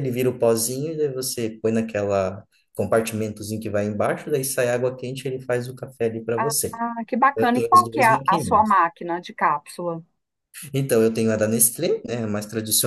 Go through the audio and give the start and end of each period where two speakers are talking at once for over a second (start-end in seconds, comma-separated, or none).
7.3-8.8